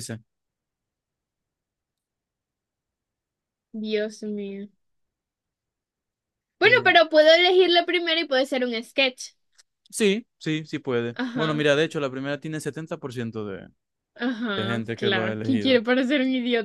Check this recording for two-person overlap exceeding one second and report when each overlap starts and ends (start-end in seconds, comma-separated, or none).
14.5-15.8